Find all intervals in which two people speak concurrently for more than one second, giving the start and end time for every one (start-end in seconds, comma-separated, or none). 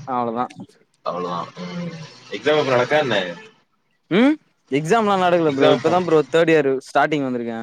none